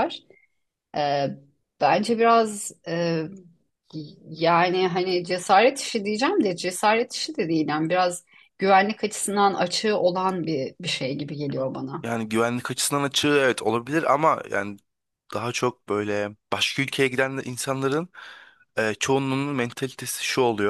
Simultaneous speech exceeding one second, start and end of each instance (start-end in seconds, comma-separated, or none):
none